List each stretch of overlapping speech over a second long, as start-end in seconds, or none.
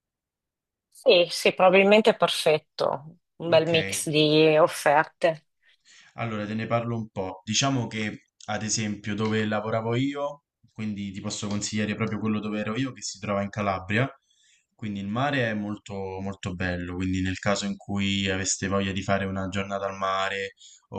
none